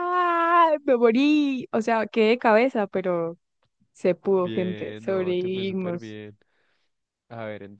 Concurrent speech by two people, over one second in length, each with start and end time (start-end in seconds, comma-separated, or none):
4.4-6.2